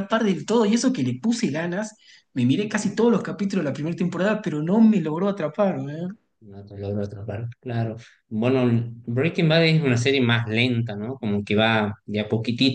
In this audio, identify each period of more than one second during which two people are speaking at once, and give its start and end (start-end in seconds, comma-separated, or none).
none